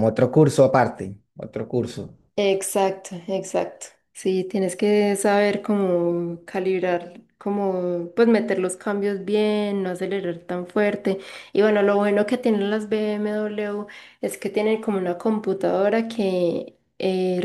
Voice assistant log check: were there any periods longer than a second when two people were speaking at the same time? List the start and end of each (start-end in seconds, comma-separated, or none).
none